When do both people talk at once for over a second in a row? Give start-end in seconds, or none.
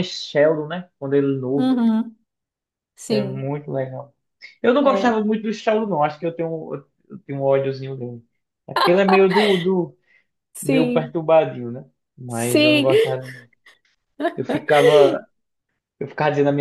none